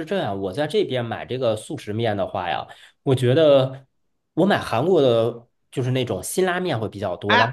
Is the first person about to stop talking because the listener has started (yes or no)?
no